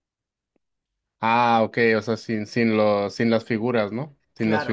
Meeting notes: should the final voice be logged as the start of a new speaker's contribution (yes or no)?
yes